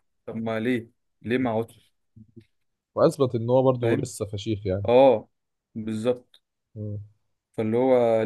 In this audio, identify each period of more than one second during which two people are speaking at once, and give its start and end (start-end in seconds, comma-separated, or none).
none